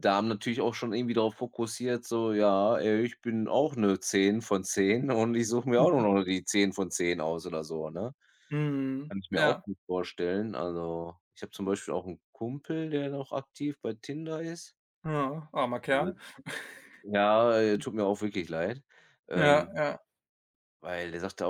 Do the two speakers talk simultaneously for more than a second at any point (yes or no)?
no